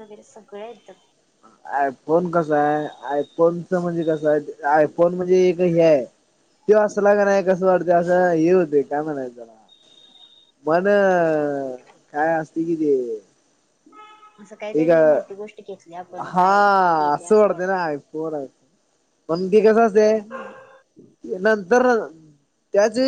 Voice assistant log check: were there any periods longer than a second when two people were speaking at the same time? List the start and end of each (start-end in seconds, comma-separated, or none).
none